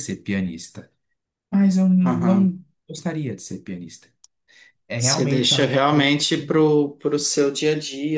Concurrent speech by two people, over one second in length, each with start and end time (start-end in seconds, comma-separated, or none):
5.0-6.2